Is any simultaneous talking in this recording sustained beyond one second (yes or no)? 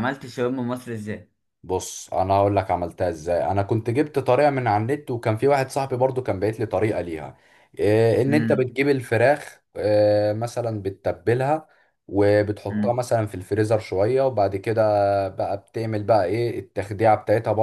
no